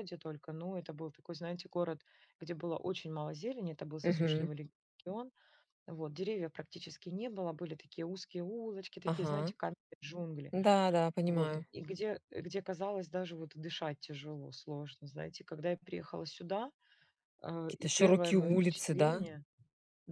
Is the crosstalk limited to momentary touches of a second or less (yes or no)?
no